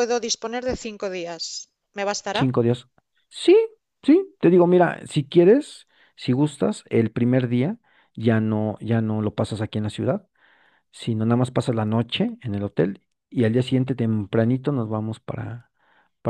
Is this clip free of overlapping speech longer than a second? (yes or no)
yes